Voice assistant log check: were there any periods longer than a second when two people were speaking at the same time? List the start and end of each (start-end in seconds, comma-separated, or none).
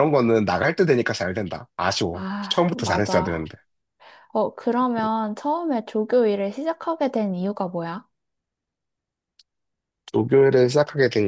2.1-3.4